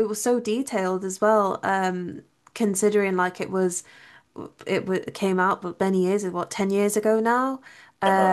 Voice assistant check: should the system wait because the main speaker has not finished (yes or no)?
yes